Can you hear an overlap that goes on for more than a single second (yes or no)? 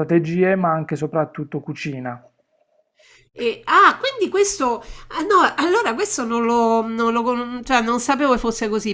no